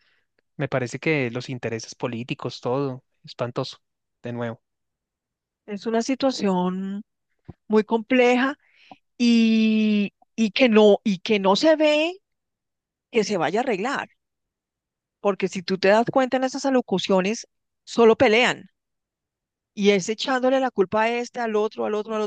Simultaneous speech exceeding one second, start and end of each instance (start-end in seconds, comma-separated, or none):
none